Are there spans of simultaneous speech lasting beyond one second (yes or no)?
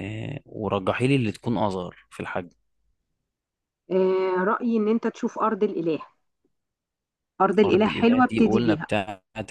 yes